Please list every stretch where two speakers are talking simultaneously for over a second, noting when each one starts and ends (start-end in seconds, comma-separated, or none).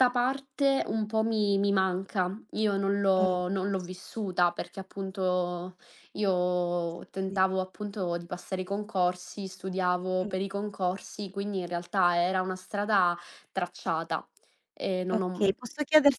none